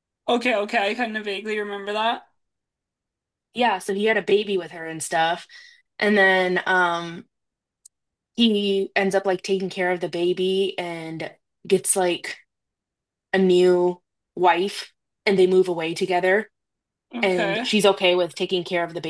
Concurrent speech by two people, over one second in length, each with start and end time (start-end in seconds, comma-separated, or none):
none